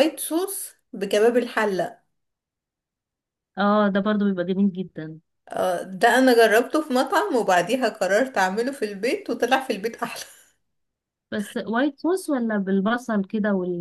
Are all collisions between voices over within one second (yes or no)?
yes